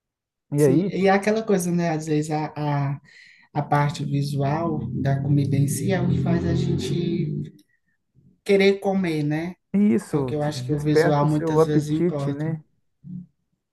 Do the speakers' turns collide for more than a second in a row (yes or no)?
yes